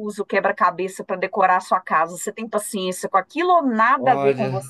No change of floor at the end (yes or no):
no